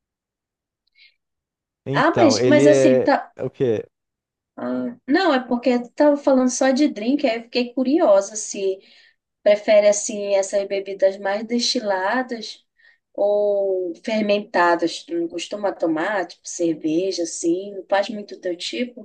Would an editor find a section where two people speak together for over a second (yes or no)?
yes